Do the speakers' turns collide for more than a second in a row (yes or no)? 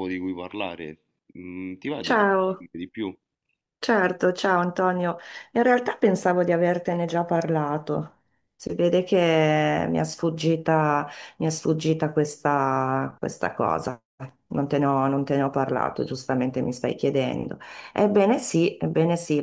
no